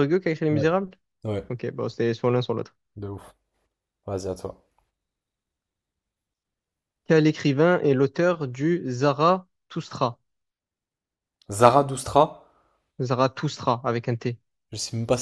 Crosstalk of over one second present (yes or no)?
no